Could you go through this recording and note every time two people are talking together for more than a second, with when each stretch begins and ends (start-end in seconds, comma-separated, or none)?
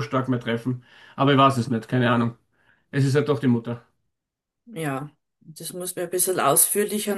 none